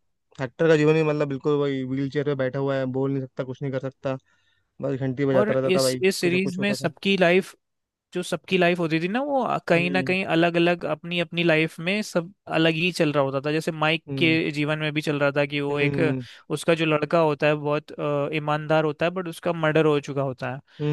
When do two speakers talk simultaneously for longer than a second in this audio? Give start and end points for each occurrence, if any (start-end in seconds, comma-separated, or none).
5.3-6.9